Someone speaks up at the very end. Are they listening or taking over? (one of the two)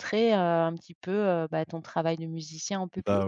taking over